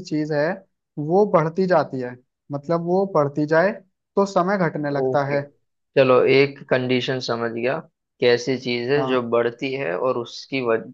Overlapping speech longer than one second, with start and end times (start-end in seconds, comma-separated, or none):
none